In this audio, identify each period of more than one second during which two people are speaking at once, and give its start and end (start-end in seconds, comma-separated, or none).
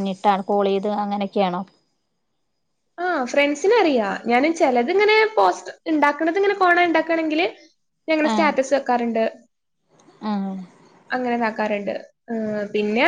none